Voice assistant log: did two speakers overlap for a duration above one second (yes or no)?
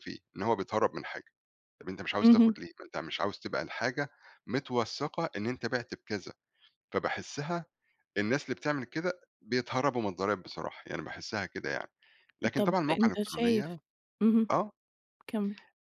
yes